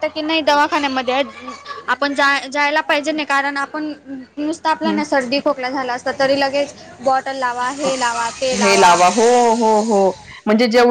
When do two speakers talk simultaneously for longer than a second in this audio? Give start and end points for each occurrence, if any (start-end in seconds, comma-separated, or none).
none